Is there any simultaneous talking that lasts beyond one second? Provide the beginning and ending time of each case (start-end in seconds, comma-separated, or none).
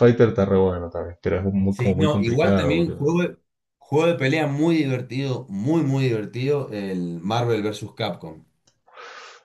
1.7-3.1